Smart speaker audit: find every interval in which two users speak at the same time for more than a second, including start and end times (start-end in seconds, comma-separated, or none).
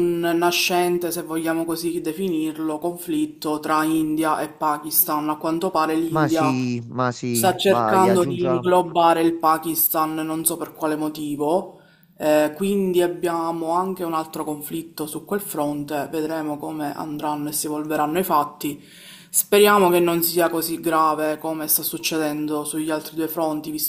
7.3-8.7